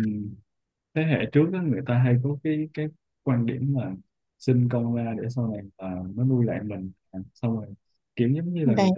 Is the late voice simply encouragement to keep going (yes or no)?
yes